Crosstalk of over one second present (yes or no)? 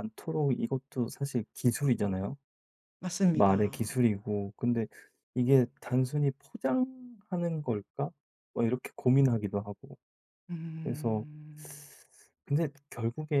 no